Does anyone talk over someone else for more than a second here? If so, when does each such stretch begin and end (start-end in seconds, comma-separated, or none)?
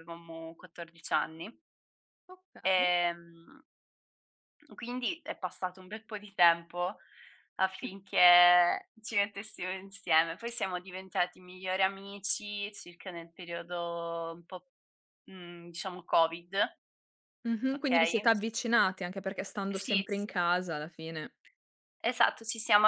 none